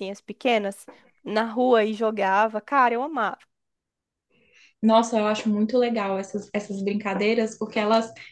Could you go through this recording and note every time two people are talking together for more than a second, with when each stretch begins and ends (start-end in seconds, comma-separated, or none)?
none